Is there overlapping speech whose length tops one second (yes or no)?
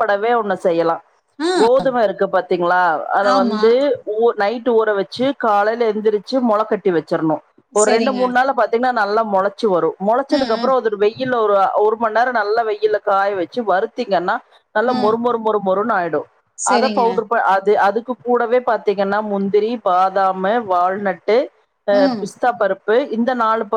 no